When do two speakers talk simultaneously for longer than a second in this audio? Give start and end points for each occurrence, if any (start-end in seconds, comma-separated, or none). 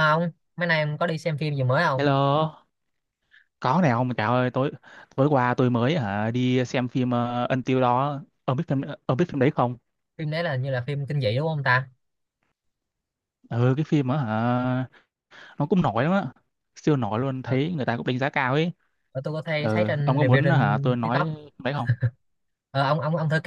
19.6-21.3